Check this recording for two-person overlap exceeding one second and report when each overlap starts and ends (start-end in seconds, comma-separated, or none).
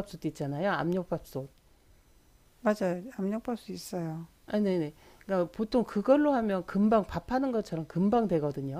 none